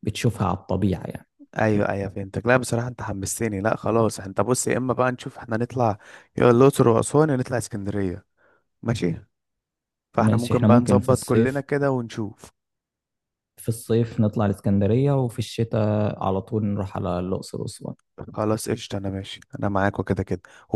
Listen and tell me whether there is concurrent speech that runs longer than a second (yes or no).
yes